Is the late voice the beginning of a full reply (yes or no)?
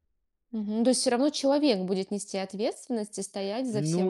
yes